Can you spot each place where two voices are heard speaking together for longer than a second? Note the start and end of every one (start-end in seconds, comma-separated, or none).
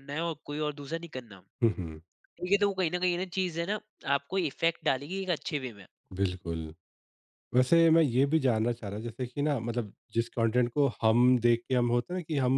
none